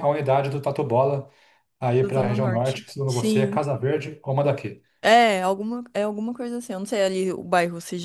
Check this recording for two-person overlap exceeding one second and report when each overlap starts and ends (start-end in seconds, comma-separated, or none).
2.0-3.6